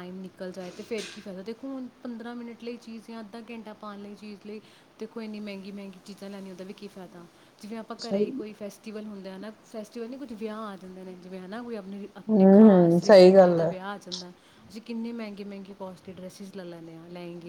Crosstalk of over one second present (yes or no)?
yes